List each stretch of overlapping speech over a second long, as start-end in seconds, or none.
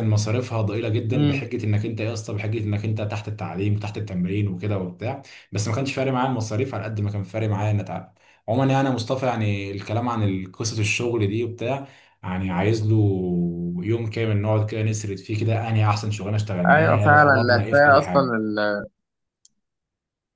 16.7-18.3